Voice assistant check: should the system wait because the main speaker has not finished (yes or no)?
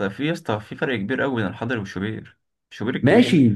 no